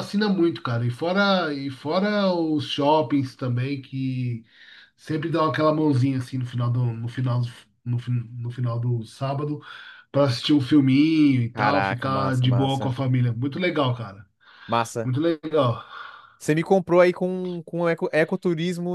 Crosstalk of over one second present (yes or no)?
yes